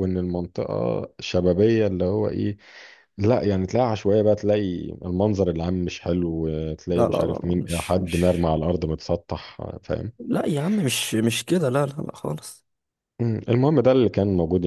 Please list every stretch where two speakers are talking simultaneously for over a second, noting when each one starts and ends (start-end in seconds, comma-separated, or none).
6.9-8.5